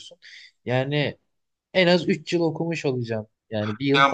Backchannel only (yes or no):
no